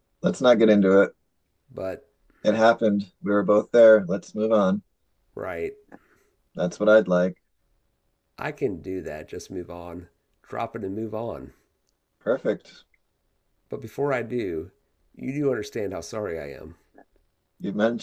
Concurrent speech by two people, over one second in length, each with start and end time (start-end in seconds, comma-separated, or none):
none